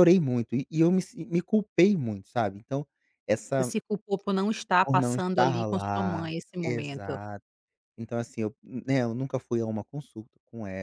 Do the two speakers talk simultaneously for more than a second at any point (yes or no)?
yes